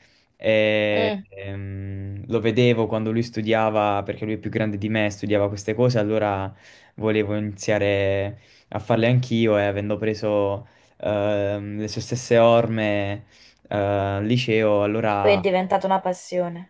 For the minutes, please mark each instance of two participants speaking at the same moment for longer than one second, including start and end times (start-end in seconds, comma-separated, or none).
none